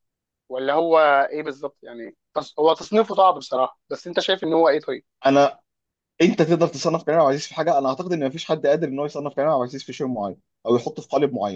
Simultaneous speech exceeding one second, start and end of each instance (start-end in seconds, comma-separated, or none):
none